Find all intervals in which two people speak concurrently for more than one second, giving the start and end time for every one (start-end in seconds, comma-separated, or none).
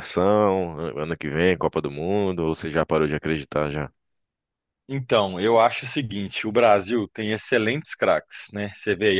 none